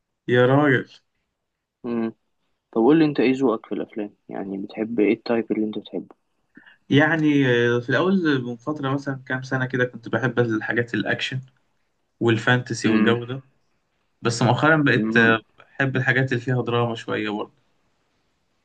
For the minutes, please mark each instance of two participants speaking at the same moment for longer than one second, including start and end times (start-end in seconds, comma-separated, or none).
none